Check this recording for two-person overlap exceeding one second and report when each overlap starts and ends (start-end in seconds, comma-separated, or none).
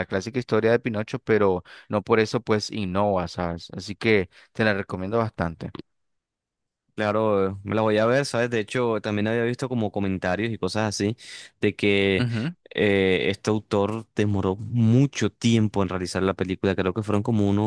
none